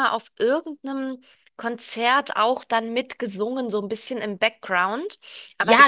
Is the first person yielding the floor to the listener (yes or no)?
yes